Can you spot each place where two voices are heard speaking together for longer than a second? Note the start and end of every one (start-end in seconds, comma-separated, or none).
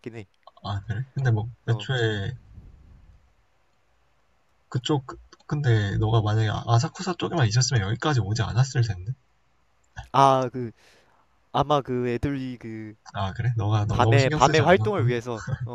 13.9-15.1